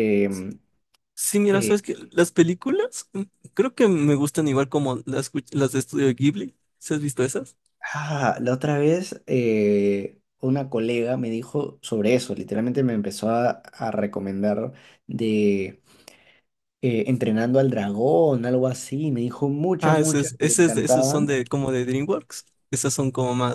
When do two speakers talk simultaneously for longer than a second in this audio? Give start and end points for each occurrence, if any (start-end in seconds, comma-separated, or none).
19.8-21.4